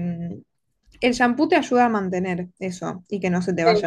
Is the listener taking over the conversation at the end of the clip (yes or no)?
no